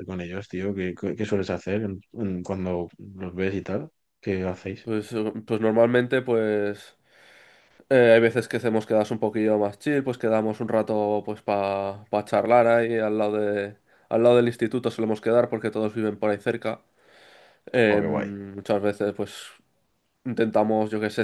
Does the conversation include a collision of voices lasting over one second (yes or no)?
no